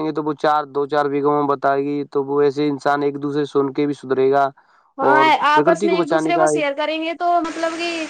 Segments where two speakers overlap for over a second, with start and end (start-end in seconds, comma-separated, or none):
5.1-6.6